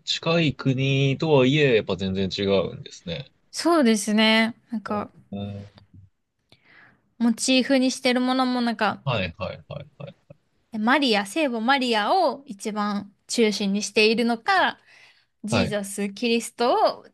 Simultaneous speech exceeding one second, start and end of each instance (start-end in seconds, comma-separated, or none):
none